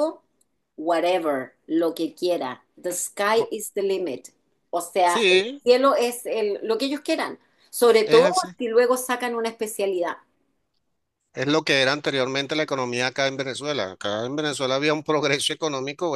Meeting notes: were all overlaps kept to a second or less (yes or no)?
yes